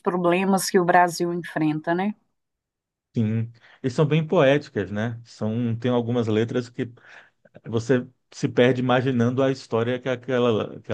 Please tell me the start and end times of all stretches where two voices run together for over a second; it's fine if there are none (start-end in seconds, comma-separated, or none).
none